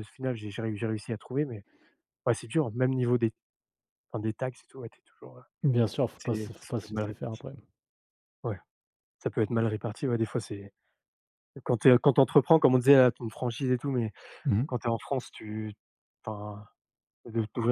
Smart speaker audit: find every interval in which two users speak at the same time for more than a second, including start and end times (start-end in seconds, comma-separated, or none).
6.2-7.4